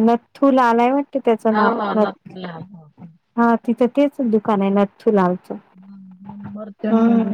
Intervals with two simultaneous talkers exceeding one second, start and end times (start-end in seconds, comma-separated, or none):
none